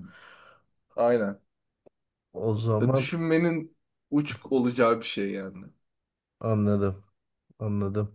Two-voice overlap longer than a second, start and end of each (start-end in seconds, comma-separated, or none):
none